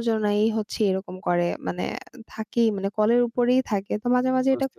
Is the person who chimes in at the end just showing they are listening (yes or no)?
yes